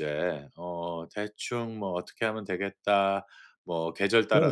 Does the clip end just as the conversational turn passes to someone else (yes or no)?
yes